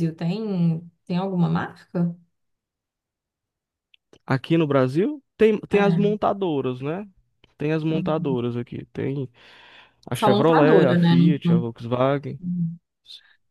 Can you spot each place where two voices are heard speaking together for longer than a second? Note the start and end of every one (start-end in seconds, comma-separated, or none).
10.1-11.7